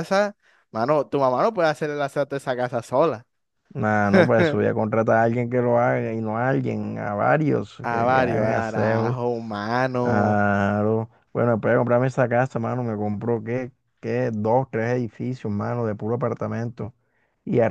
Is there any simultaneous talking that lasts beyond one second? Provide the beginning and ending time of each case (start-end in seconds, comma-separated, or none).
7.8-9.2